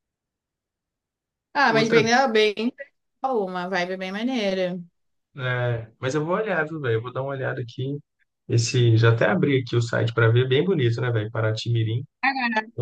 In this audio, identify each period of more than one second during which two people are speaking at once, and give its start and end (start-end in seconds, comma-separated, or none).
none